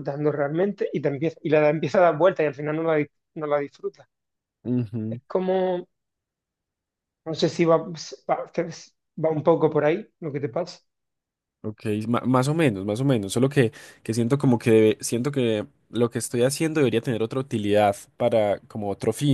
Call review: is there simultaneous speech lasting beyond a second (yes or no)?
no